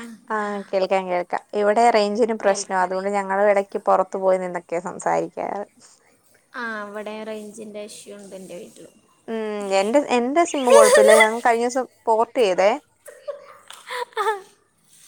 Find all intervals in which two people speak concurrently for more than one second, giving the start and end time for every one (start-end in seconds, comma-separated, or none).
none